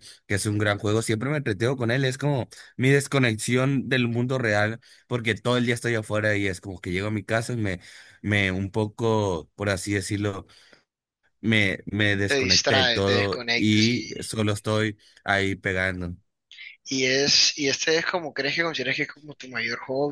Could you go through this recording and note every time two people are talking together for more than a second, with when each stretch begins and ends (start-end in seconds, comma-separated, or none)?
12.3-14.1